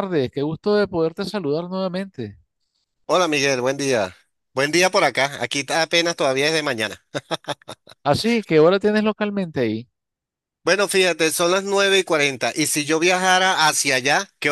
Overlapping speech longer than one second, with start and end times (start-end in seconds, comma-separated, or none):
none